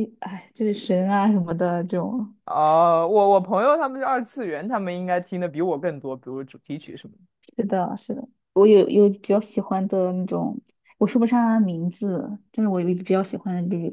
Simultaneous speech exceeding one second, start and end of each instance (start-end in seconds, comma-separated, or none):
none